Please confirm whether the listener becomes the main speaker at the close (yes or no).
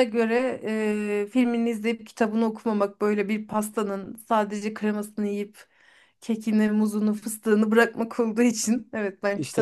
yes